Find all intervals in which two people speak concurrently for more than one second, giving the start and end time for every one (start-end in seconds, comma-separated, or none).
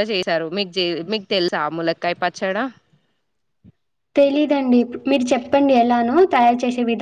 none